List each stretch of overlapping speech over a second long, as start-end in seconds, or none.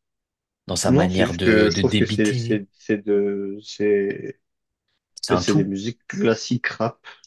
0.8-2.6